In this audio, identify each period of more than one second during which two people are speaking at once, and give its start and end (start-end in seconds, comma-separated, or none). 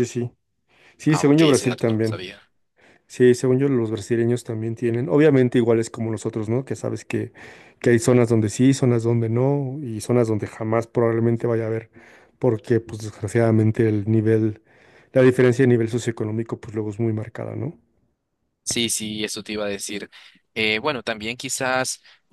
1.1-2.3